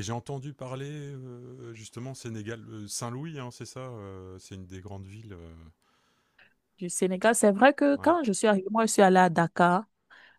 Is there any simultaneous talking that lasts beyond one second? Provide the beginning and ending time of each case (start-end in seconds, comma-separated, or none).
none